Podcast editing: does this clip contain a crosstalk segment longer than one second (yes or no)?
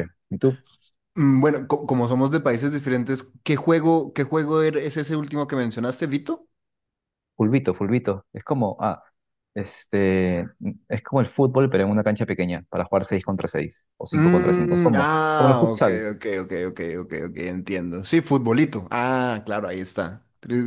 yes